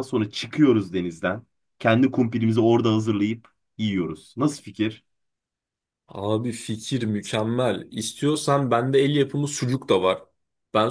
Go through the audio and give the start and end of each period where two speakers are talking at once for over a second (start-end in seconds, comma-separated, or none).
none